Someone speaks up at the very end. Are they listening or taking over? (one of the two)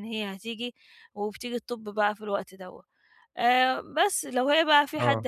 listening